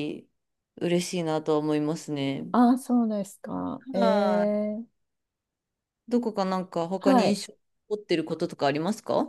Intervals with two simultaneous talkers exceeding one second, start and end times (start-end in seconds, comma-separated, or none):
none